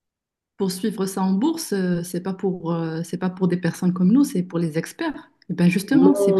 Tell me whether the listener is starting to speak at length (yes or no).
yes